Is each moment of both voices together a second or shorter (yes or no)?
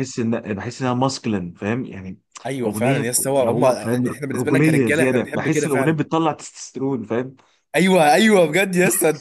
no